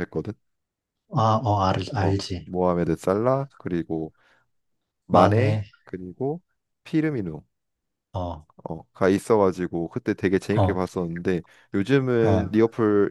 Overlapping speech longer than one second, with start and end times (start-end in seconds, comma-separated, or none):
none